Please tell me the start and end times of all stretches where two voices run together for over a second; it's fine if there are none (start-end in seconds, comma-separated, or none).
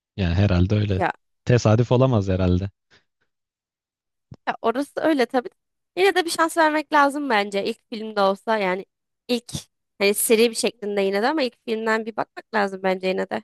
none